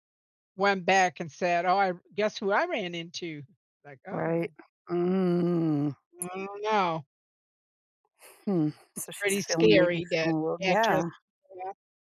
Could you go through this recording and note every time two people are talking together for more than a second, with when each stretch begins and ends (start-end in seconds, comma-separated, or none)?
9.0-11.1